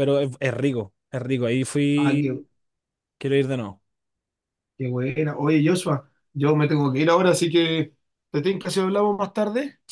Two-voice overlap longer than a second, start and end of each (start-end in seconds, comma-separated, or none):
none